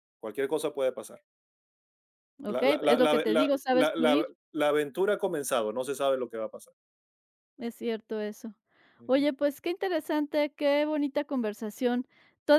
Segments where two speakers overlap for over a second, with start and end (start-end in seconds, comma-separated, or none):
2.5-4.3